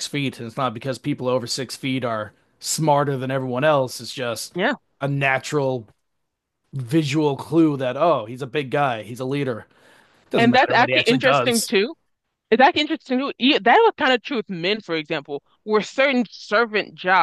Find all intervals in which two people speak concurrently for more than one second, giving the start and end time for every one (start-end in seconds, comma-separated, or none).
10.4-11.7